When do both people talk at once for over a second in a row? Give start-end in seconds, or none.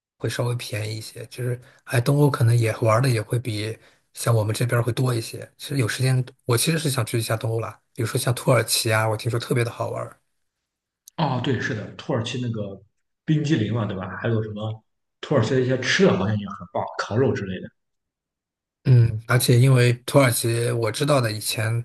none